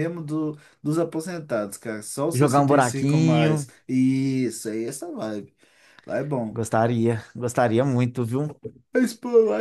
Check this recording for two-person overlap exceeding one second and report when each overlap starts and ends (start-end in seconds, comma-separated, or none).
2.3-3.6